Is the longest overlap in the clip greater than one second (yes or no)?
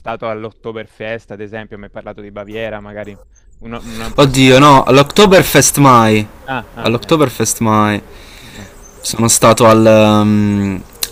yes